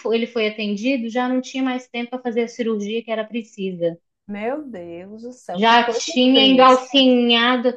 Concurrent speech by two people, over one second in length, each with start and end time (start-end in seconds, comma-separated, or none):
5.5-6.9